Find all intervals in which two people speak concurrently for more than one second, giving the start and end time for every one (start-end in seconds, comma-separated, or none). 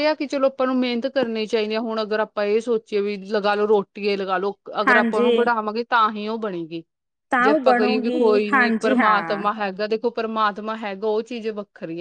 7.4-9.4